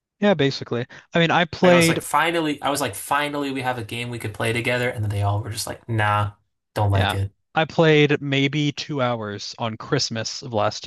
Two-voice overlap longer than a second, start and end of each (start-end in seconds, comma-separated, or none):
none